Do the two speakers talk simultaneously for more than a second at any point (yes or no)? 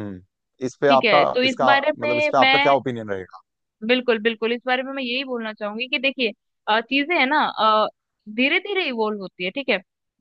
yes